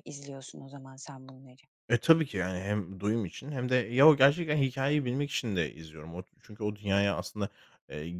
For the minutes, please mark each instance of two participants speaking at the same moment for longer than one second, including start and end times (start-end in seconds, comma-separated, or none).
none